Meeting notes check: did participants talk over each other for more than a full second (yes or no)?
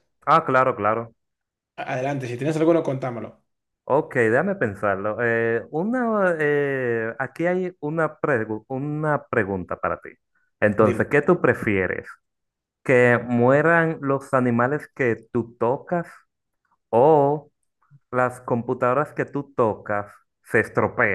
no